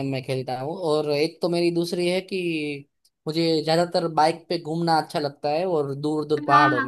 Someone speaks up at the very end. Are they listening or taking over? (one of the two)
taking over